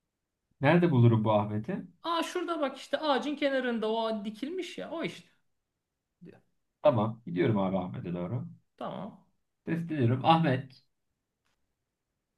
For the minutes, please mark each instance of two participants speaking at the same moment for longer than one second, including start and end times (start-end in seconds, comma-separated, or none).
none